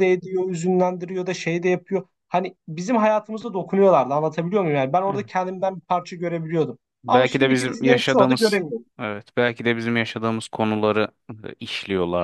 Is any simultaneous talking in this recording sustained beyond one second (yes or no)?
yes